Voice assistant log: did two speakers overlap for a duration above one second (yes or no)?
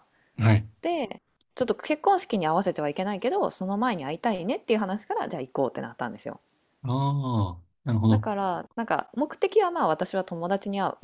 no